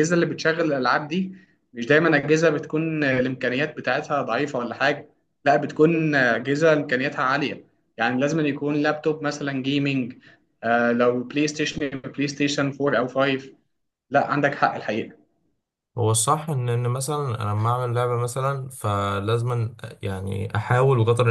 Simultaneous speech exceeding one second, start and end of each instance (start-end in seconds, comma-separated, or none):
none